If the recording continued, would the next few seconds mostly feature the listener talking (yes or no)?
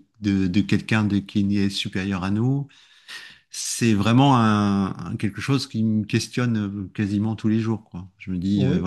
no